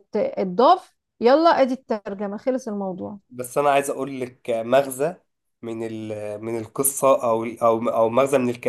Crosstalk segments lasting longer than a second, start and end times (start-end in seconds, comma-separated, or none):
none